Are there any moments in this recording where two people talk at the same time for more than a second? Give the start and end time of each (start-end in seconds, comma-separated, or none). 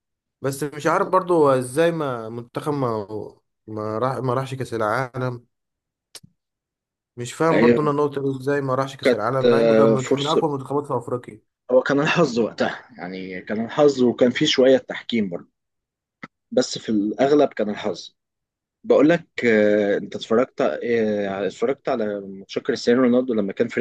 9.0-10.5